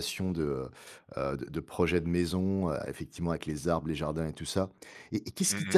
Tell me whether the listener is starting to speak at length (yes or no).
no